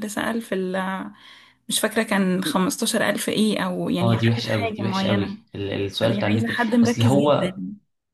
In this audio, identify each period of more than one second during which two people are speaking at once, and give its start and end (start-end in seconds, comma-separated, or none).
4.0-5.4, 6.0-7.6